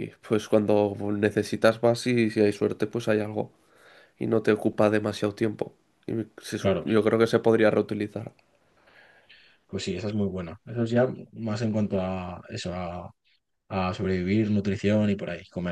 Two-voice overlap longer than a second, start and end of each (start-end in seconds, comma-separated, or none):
none